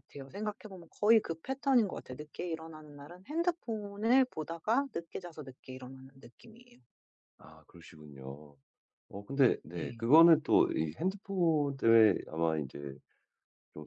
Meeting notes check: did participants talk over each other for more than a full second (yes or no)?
no